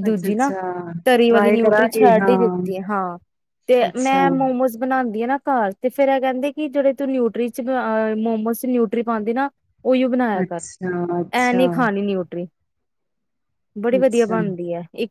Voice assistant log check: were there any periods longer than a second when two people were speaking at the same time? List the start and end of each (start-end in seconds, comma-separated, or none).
1.3-2.5